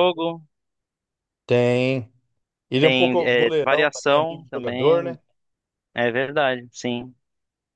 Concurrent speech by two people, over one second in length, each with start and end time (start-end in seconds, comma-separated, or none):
2.8-5.2